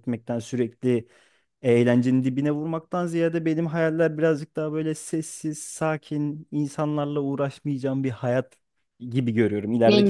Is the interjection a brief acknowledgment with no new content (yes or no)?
yes